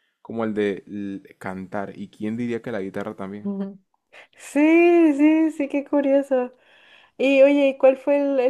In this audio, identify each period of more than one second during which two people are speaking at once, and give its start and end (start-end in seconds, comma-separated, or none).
none